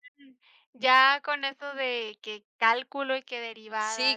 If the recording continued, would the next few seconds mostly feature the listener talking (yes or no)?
yes